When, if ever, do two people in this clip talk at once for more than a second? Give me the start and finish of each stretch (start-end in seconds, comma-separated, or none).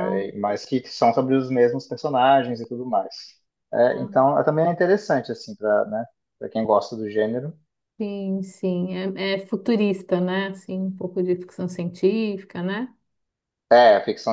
none